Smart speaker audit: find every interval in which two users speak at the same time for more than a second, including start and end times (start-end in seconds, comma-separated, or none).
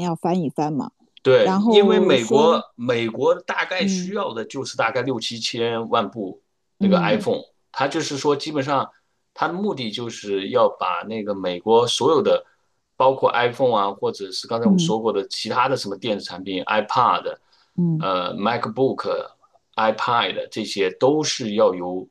1.4-2.6